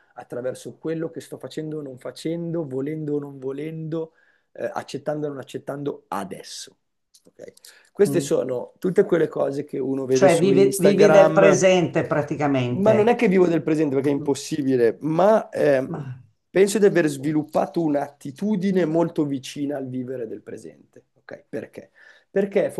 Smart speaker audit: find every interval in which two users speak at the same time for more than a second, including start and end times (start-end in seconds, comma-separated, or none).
10.1-11.6